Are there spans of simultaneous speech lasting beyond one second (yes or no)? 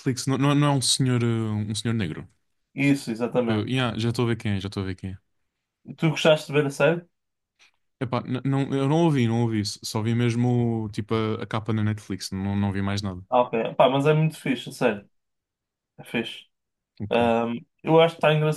no